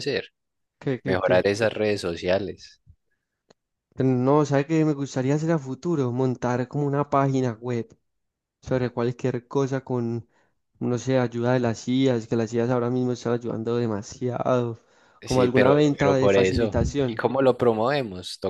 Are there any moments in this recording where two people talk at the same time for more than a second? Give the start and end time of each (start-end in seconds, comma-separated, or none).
15.2-17.2